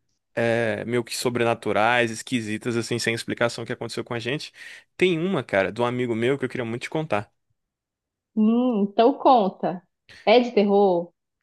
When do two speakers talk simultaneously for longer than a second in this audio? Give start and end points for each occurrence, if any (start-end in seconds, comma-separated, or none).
none